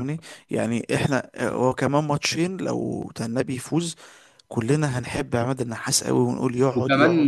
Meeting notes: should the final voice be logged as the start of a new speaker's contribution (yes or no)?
yes